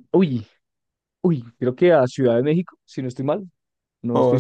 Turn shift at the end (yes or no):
yes